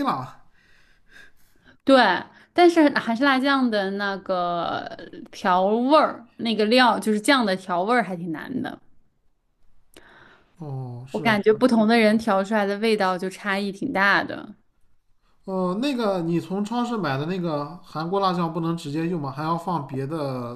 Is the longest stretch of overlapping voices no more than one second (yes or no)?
yes